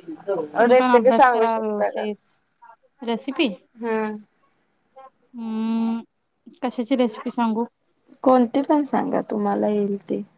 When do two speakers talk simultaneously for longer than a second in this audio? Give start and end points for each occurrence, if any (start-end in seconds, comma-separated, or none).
0.7-2.0